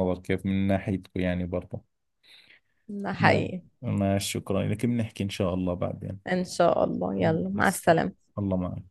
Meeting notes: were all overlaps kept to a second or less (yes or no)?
yes